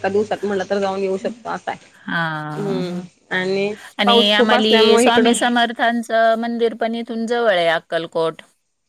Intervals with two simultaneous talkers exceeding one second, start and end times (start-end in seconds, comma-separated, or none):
4.0-5.3